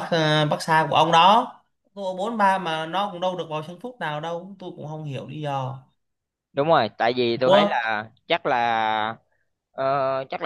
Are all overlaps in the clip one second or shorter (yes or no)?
yes